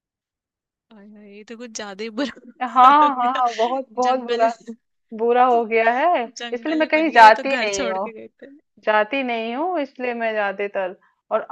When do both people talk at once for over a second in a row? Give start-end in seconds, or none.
6.4-8.1